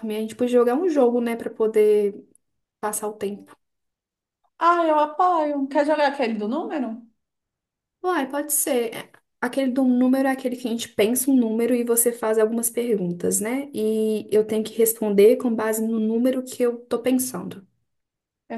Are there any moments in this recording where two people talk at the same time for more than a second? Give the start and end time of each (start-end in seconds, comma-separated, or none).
none